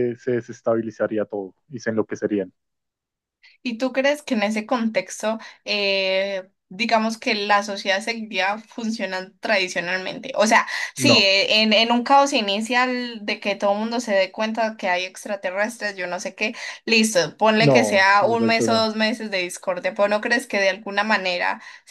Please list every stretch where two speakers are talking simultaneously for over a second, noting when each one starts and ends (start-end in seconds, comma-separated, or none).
17.6-18.9